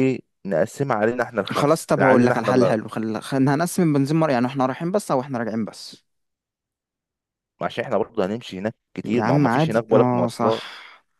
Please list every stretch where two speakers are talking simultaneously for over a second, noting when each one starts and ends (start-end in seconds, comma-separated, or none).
1.5-2.8, 9.0-10.6